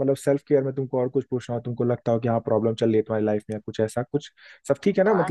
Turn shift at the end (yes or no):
yes